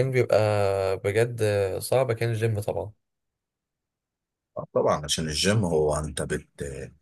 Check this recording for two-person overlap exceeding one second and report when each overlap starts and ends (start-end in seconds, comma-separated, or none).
none